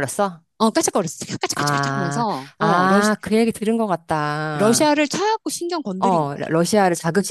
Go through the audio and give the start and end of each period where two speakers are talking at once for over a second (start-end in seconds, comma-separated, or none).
1.6-3.1